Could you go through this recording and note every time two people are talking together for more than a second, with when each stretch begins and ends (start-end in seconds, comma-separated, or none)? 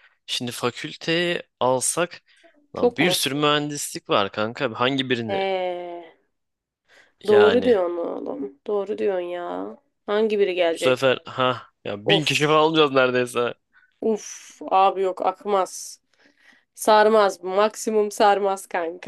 none